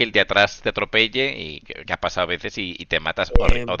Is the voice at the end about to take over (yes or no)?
no